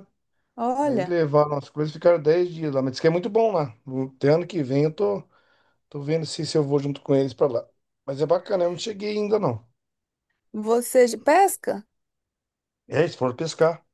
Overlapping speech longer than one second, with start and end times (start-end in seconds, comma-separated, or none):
none